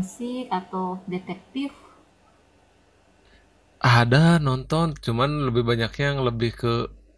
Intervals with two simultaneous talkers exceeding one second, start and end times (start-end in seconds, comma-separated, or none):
none